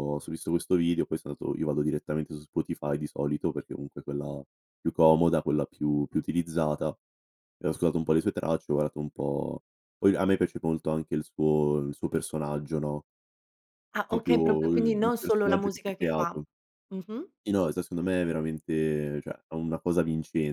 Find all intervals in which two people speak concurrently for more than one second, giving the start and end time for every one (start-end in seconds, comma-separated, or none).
14.1-16.4